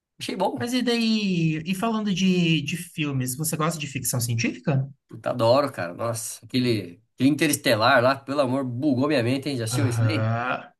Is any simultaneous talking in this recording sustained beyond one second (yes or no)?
no